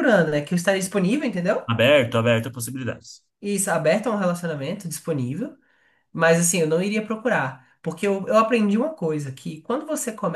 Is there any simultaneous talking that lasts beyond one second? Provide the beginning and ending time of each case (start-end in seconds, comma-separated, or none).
none